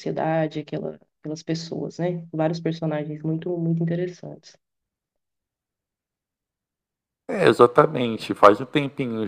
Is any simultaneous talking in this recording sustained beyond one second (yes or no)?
no